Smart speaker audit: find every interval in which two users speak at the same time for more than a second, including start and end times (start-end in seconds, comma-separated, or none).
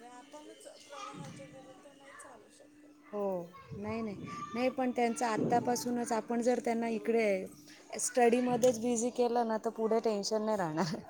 none